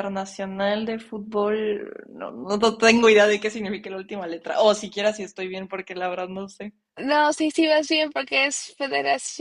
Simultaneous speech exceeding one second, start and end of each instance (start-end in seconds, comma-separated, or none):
none